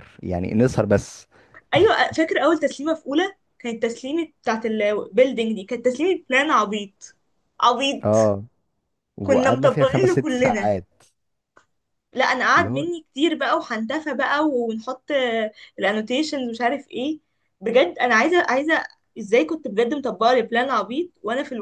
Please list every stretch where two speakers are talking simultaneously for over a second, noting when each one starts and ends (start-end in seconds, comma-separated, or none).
9.2-10.7